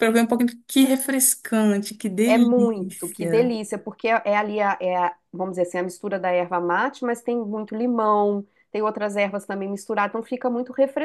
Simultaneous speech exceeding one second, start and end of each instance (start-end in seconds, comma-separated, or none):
2.2-3.5